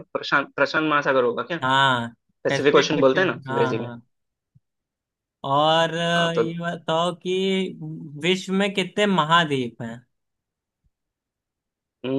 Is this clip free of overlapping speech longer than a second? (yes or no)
no